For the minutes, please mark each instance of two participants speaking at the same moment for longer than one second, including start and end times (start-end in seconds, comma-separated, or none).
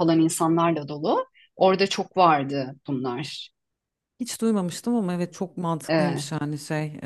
none